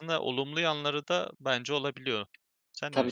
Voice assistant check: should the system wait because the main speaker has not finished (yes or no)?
no